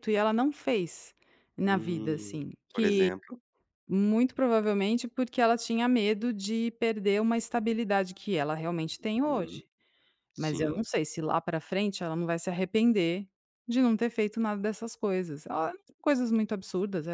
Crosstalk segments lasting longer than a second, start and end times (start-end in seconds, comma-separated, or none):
1.6-3.1